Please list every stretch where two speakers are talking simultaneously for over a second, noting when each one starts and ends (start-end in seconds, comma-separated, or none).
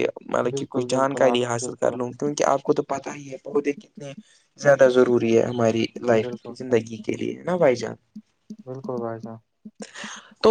0.5-1.9